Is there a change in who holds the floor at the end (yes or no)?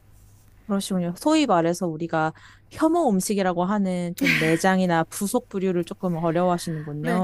yes